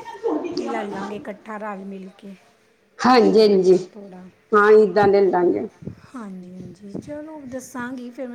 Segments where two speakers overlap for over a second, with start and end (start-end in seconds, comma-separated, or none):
none